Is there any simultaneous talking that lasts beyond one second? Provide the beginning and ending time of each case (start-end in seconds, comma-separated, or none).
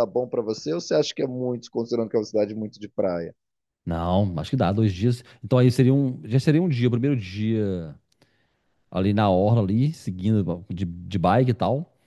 none